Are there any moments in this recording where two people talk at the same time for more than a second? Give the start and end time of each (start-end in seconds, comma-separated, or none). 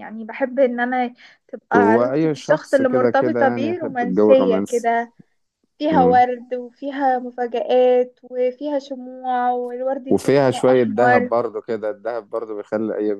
1.8-4.9, 10.1-11.3